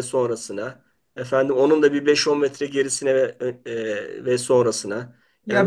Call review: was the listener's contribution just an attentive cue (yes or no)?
no